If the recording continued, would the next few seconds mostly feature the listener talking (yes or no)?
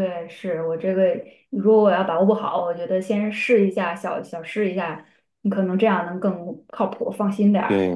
yes